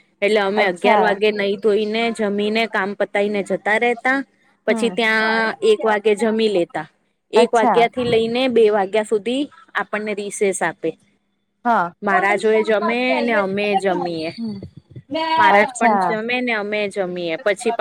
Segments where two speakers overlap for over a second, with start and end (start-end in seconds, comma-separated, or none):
none